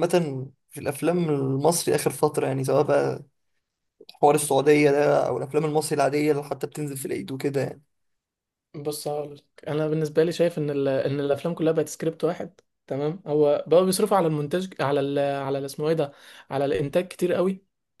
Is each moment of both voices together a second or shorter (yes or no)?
yes